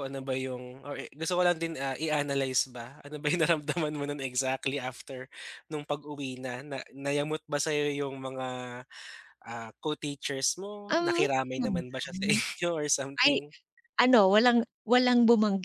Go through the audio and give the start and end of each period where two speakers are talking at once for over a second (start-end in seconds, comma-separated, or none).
10.9-12.4